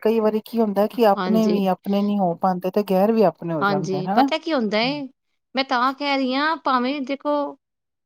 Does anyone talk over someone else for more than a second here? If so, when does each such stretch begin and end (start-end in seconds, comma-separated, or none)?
none